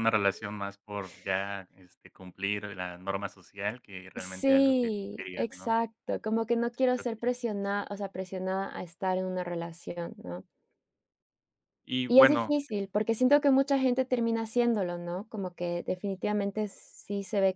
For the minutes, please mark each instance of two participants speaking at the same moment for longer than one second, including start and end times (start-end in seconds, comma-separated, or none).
4.2-5.8